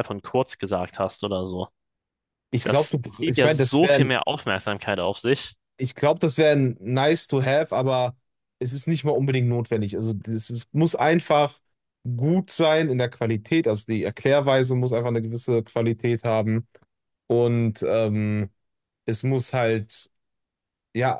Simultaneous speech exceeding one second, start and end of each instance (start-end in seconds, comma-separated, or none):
2.6-4.1